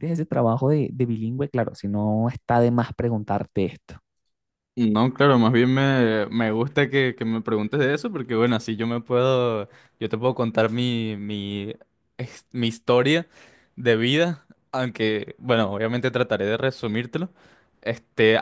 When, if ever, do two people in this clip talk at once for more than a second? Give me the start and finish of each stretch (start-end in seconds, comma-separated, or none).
none